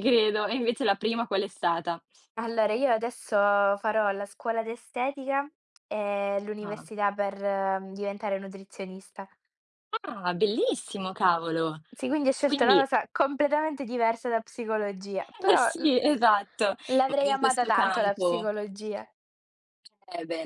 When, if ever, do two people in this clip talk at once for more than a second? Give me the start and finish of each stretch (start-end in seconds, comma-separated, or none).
16.9-18.5